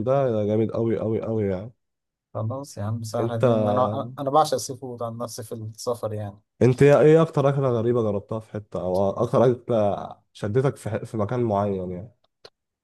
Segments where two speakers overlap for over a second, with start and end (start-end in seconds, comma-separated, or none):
none